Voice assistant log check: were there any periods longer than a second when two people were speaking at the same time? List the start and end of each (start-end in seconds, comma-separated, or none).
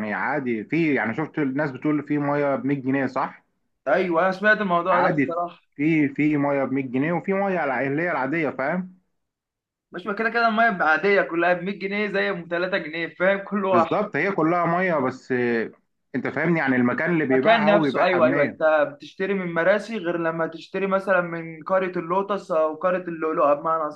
17.2-18.6